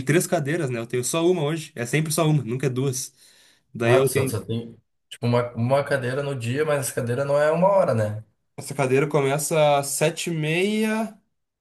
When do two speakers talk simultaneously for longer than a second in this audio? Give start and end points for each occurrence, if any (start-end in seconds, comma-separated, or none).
none